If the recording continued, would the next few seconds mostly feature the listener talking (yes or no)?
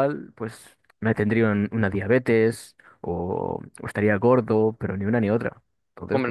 yes